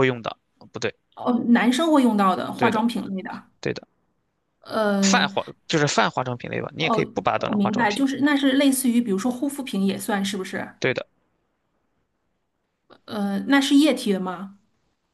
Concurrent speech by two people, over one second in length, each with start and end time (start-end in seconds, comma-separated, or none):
6.8-8.0